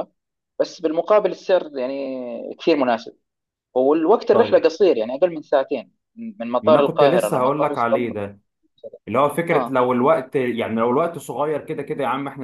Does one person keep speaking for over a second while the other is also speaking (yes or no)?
yes